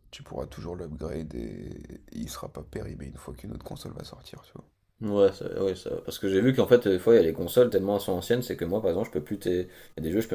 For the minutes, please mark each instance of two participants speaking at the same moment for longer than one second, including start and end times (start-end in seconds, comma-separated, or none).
none